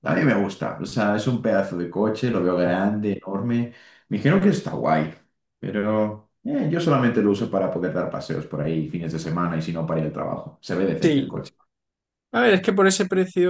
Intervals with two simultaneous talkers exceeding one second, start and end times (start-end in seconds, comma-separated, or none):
none